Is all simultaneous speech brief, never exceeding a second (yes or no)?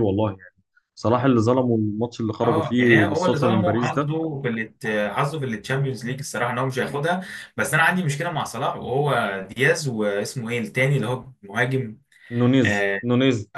no